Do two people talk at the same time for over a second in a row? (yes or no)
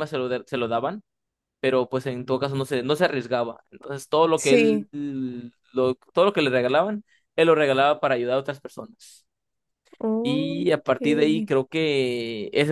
yes